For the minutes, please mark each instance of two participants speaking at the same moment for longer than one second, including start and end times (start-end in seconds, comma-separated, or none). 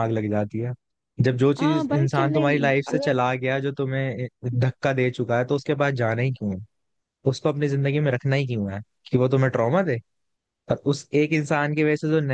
1.6-3.2